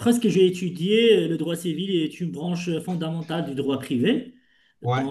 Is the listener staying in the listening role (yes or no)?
yes